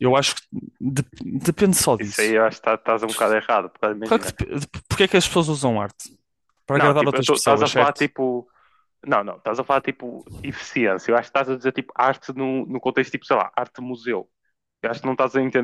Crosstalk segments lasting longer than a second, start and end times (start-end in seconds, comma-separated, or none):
6.8-8.1